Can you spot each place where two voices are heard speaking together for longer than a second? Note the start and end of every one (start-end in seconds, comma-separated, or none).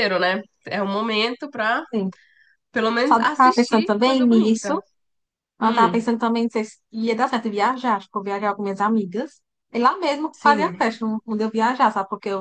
3.1-4.7